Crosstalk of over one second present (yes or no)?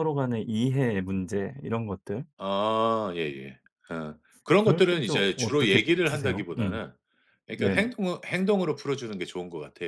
yes